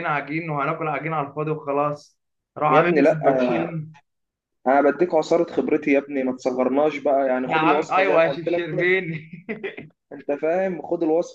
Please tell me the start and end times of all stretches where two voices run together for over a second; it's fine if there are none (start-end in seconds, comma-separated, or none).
7.5-8.9